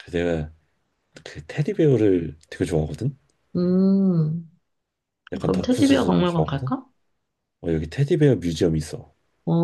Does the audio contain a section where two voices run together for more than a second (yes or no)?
yes